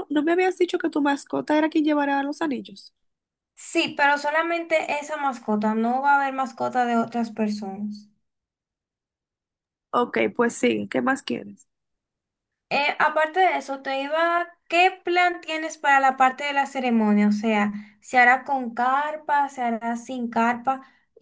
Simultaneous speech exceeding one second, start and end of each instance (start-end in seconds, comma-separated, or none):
none